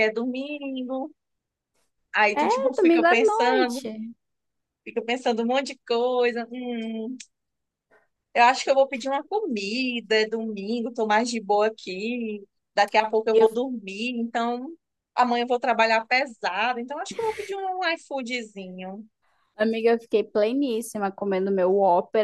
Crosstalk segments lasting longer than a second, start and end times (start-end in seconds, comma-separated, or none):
2.3-3.9